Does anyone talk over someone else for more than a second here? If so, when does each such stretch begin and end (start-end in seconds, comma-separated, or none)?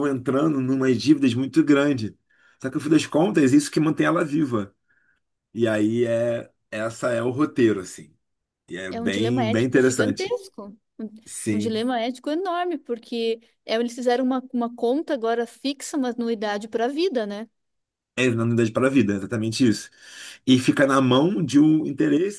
8.9-10.4